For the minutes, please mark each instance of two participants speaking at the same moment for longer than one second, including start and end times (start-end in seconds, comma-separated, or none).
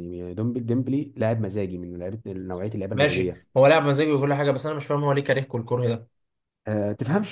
none